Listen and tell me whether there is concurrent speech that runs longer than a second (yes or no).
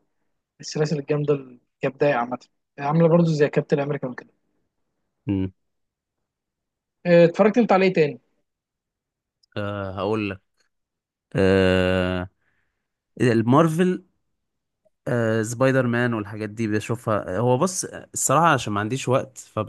no